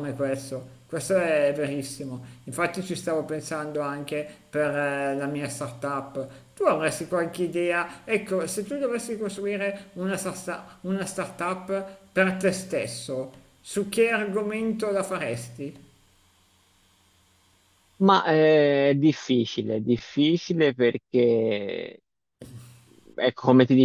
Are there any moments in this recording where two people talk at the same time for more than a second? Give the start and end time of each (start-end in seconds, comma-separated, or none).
none